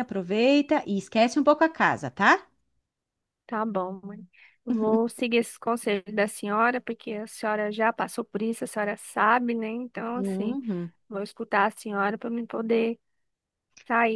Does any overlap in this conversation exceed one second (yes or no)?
no